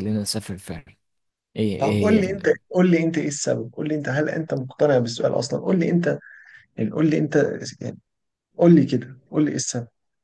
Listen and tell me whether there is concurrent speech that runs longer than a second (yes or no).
no